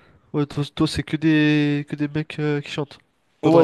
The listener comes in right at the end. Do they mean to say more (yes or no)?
yes